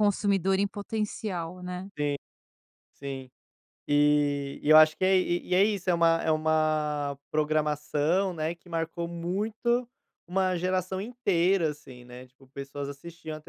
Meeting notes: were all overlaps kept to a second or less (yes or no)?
yes